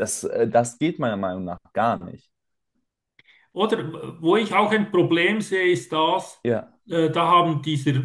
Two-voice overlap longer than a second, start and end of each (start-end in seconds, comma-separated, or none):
none